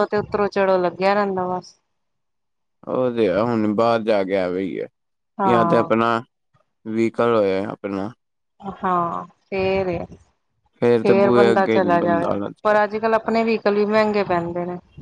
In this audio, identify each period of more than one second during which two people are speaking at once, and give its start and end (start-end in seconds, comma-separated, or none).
11.0-12.8